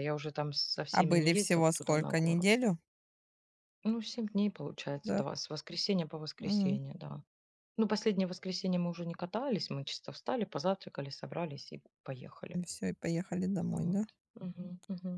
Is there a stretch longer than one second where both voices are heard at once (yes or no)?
yes